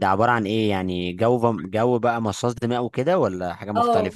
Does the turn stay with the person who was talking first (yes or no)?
no